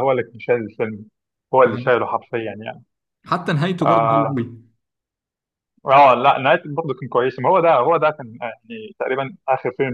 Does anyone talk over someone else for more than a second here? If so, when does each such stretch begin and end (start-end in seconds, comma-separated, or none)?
none